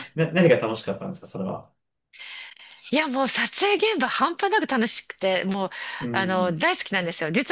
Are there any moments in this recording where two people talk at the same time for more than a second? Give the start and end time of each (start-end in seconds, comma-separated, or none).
none